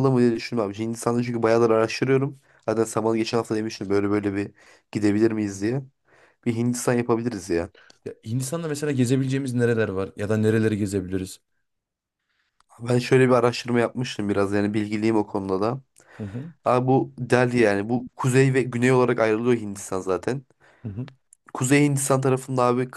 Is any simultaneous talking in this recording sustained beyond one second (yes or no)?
no